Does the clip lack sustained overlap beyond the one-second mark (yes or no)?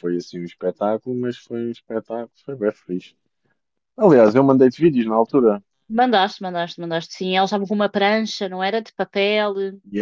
yes